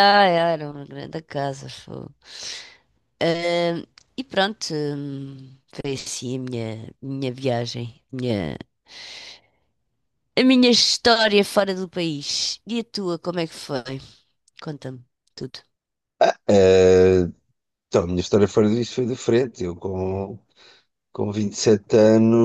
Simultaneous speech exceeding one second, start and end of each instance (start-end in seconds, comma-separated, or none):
none